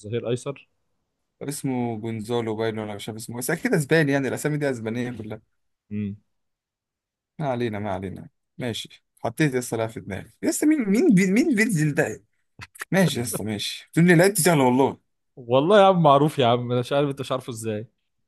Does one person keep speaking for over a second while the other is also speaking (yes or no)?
no